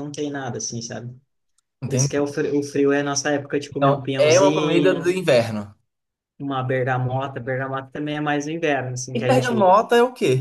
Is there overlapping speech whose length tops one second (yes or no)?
yes